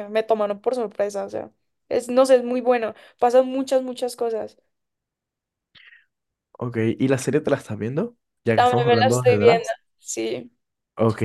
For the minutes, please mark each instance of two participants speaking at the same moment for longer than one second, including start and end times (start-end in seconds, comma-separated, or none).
8.5-9.8